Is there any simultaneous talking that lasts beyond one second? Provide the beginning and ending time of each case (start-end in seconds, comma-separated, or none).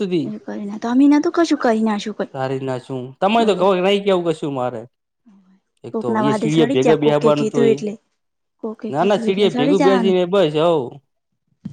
5.9-7.7